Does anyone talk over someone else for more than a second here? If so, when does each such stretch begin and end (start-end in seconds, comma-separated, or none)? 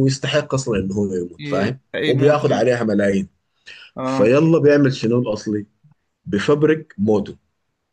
1.4-2.8